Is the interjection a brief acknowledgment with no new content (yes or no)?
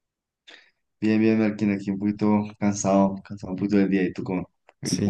no